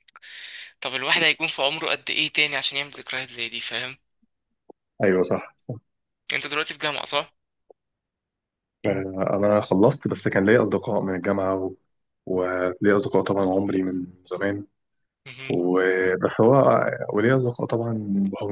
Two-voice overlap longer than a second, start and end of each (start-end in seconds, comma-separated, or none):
none